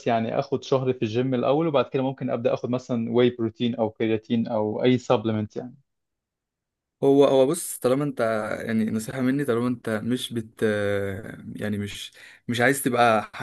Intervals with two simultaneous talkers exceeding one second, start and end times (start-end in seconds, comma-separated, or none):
none